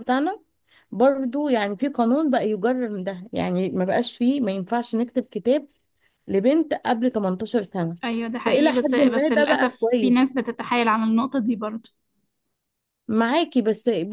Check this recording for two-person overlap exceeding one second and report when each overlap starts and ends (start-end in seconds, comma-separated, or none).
8.4-10.2